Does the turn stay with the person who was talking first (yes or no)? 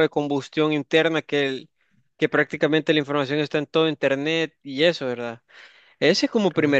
yes